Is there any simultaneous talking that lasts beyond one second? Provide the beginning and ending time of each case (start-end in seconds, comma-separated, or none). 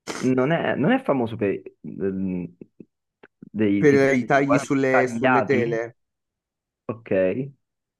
3.8-5.8